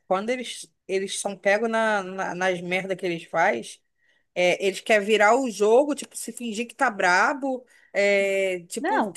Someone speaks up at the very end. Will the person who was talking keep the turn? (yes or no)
yes